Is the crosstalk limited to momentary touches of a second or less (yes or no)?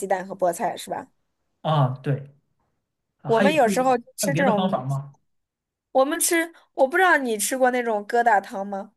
no